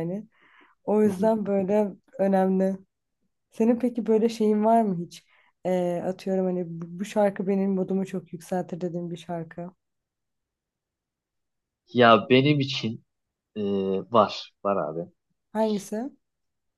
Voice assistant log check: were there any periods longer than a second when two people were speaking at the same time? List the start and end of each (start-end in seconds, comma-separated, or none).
none